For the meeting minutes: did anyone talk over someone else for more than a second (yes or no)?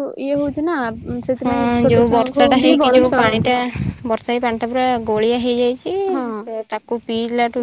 yes